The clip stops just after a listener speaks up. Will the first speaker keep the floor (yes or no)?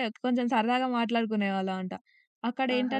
yes